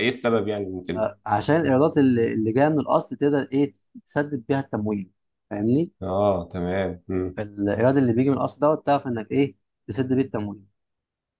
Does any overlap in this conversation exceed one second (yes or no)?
no